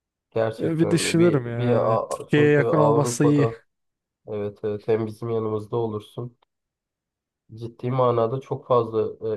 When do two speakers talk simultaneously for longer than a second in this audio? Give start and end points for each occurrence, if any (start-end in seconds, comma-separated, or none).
0.6-3.5